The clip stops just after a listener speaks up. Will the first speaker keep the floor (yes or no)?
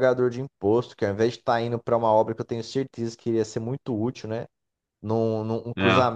yes